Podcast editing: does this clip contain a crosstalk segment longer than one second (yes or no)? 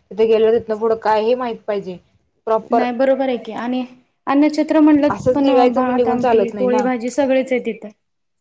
yes